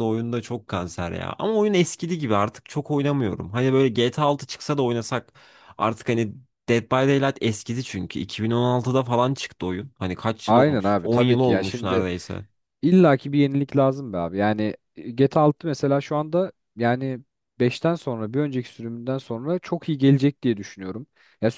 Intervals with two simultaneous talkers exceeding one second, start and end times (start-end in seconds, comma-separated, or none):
10.5-12.1